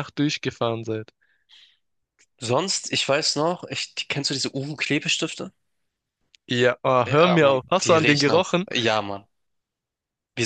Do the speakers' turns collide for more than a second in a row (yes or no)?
yes